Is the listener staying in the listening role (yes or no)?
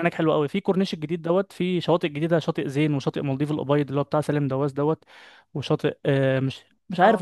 yes